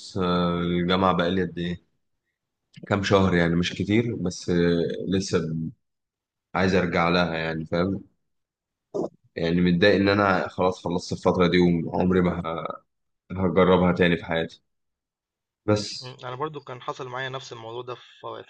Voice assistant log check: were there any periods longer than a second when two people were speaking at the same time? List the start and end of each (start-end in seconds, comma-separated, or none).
none